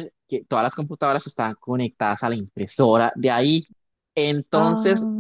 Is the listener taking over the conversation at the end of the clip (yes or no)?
no